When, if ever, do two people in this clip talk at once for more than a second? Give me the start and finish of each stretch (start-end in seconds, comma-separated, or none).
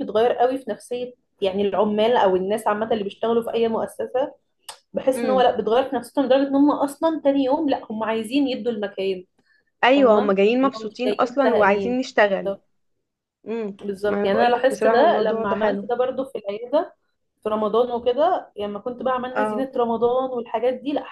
10.0-12.0, 13.8-15.9